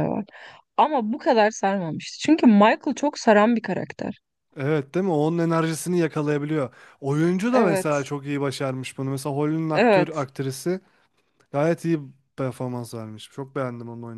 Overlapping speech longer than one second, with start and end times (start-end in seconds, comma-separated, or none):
none